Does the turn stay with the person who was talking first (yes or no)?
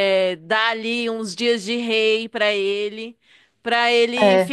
yes